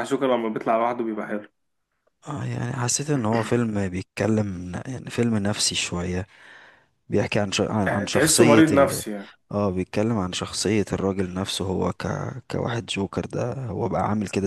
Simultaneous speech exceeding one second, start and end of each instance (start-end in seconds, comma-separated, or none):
7.8-9.0